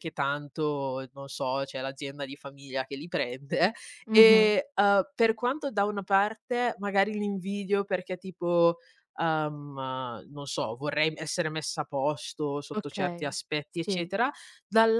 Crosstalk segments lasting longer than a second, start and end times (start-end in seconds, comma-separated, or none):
12.7-14.1